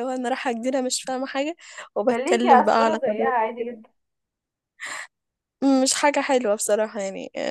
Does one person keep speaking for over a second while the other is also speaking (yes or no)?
yes